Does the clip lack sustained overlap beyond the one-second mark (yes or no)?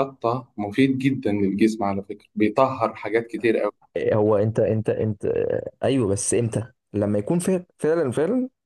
yes